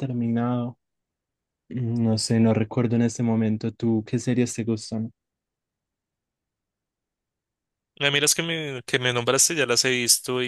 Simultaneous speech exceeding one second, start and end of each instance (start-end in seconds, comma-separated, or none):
none